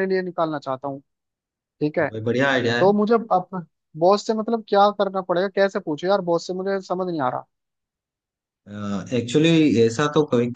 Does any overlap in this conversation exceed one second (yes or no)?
no